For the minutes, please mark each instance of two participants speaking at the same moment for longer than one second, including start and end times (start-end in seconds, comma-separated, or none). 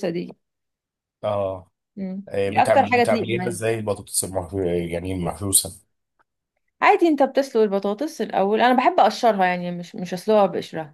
2.3-3.6